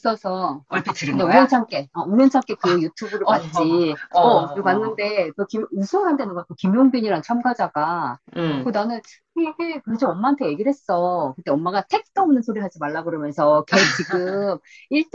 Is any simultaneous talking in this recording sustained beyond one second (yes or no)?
yes